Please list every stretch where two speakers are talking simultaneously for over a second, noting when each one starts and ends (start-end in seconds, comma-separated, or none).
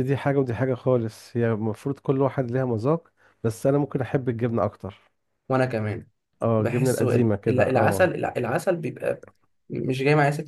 6.6-8.1